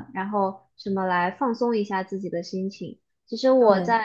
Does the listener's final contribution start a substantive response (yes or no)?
no